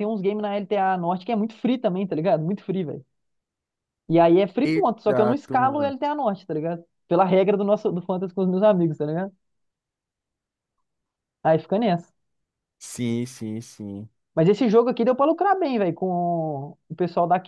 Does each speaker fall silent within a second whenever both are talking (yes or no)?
no